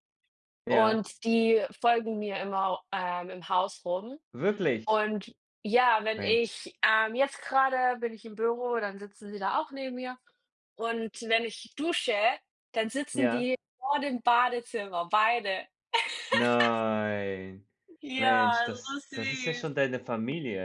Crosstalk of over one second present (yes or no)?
yes